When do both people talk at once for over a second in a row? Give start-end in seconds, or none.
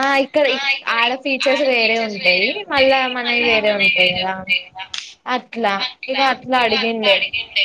1.8-4.3